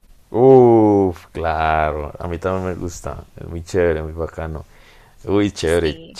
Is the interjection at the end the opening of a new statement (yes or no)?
no